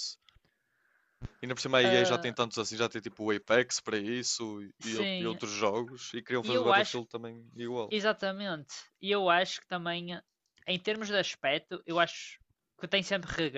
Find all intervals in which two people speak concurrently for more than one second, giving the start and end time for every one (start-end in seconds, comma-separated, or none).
none